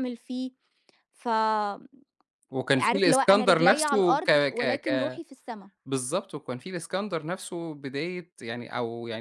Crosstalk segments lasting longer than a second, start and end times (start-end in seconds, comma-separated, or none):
2.8-5.2